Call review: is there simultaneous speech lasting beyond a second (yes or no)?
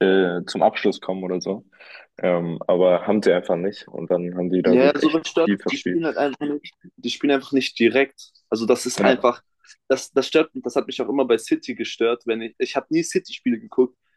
yes